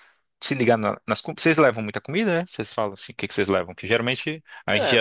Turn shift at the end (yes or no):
no